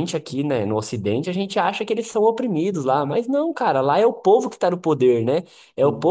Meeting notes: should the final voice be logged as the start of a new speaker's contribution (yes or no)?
no